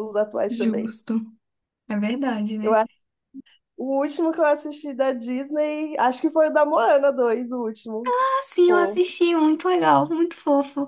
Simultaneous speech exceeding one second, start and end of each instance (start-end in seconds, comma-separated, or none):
none